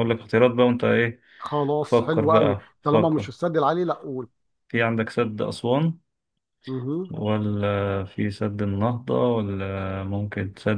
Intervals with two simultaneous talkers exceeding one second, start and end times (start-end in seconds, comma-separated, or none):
1.8-3.3